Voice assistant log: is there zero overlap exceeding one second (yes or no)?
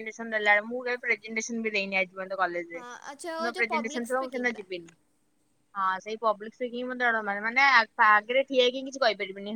no